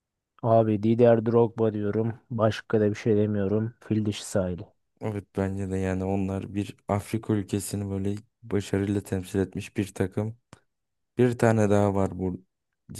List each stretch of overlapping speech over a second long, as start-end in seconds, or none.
none